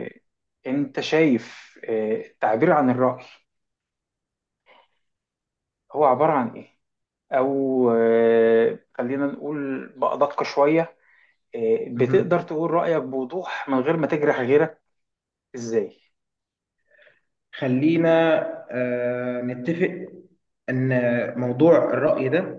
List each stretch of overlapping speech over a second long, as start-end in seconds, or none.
none